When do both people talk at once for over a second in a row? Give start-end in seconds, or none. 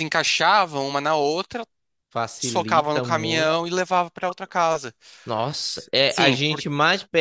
2.4-3.6